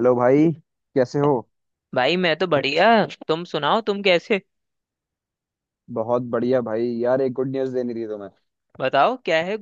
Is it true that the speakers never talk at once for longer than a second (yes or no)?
yes